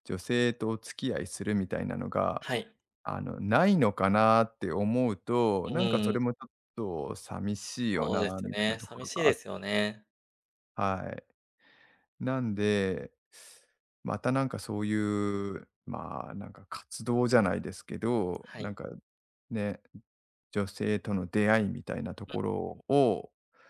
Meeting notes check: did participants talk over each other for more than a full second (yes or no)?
yes